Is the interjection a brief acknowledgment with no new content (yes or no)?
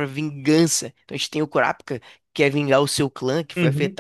yes